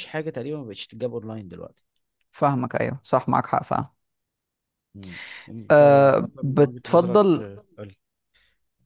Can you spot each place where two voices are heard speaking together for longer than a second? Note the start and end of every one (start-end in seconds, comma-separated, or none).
5.7-7.4